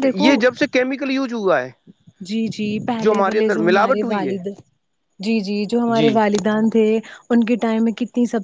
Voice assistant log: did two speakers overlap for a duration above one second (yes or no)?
yes